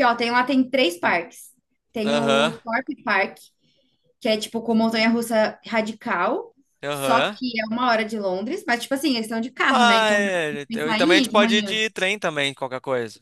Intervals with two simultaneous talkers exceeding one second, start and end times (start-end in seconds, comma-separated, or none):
9.7-11.8